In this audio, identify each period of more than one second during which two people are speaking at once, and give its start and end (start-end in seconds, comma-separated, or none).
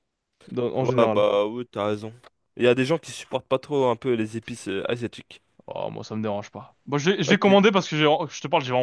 none